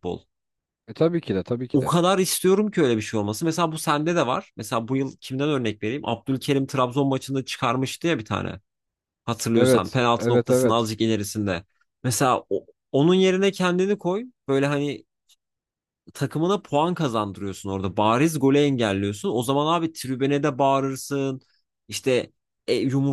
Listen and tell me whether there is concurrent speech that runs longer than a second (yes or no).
yes